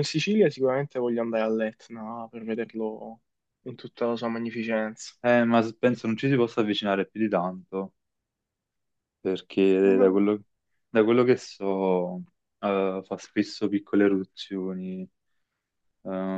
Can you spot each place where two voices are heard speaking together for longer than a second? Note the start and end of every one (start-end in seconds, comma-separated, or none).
none